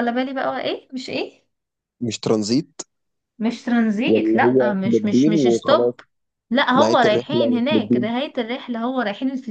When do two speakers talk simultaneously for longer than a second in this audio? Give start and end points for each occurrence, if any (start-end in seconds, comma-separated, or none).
4.1-5.9, 6.8-8.1